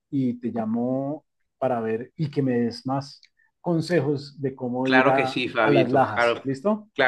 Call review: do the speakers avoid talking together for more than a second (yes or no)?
no